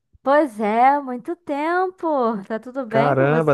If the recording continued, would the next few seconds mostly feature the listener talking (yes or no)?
yes